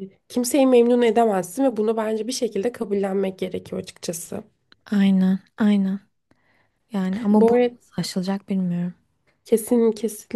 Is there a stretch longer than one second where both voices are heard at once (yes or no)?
no